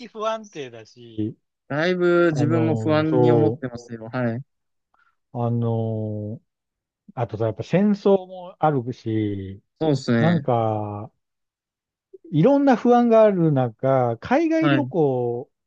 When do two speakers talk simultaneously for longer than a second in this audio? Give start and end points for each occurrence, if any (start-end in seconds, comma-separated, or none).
2.3-3.6